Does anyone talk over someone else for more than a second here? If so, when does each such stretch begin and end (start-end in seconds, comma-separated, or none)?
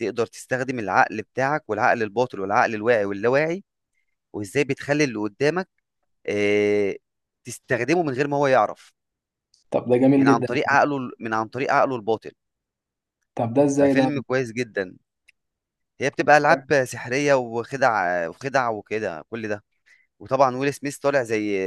none